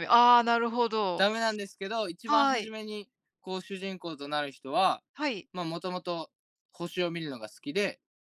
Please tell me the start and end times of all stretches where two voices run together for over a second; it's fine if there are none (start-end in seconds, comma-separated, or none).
none